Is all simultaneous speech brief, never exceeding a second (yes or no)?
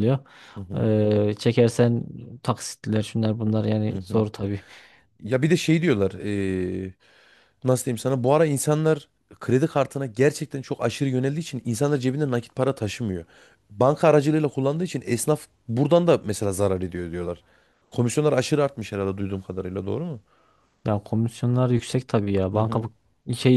yes